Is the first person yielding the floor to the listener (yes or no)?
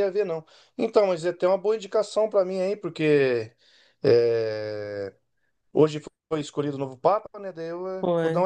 no